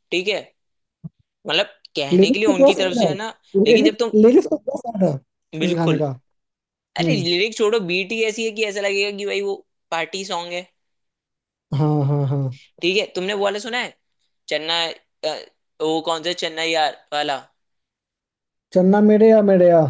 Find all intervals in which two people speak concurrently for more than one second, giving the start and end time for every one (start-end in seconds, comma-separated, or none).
2.1-4.1